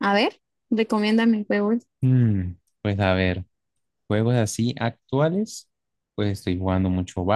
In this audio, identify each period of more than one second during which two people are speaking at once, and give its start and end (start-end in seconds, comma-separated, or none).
none